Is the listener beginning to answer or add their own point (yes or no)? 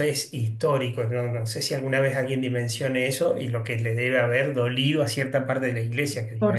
yes